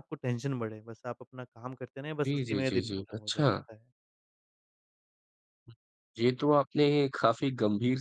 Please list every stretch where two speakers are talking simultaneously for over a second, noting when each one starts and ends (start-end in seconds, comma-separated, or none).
2.2-3.7